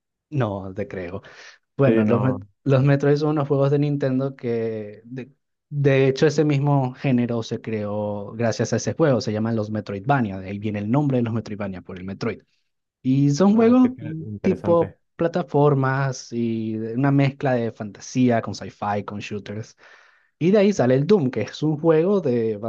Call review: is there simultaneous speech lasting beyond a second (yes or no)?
yes